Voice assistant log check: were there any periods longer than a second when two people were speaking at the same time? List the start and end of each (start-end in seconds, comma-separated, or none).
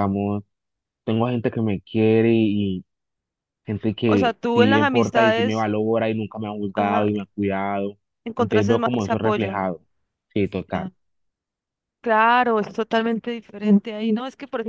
4.0-5.7, 8.4-9.7